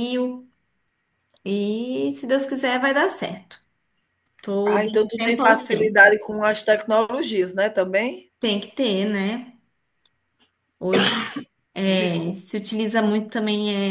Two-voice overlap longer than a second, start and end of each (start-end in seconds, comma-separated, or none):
4.7-6.2